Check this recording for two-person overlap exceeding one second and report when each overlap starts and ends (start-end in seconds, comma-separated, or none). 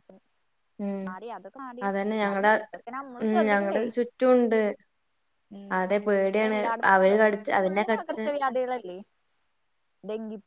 6.3-8.2